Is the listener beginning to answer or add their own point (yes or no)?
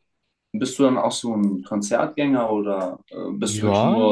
yes